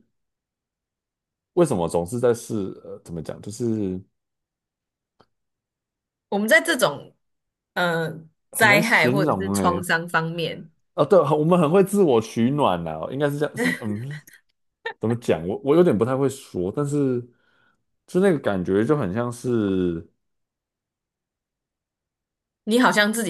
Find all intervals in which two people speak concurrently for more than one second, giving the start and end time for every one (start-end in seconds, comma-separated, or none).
8.5-9.8